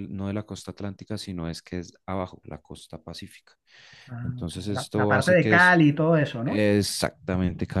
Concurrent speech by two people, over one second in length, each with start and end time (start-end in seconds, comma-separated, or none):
4.2-5.7